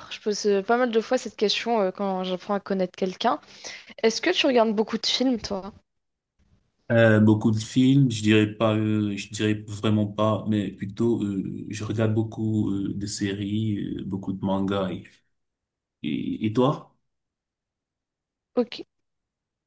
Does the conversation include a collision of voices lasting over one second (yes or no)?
no